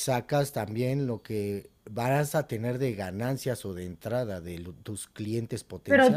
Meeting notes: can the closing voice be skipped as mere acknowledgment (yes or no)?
no